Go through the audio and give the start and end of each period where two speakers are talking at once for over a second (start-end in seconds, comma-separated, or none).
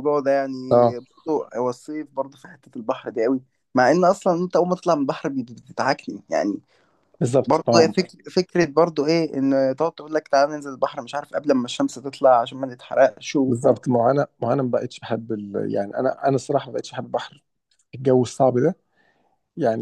none